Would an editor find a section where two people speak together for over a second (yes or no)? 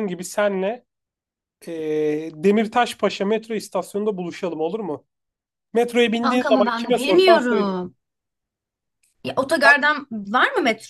yes